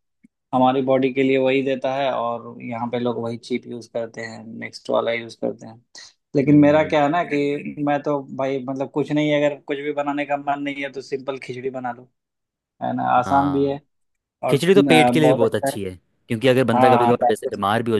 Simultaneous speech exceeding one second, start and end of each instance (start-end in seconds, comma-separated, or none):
14.5-15.7